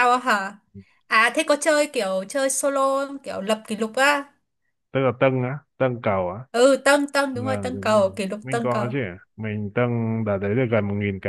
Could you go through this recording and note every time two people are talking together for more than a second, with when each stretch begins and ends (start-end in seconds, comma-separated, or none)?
7.3-8.9